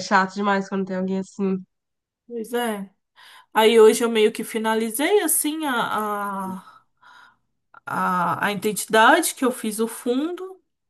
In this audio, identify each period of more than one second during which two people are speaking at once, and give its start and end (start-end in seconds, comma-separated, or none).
none